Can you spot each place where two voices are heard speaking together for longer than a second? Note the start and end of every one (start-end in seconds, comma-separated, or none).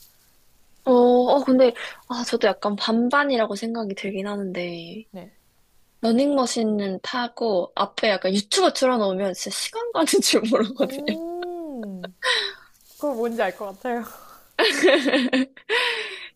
none